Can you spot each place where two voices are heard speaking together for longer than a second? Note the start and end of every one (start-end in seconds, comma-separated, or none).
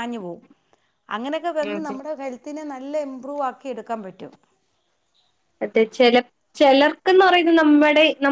none